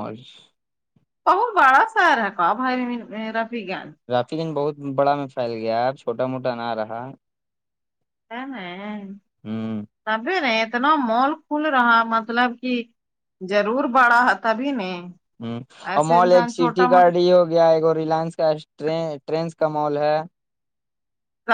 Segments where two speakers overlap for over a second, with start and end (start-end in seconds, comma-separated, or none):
none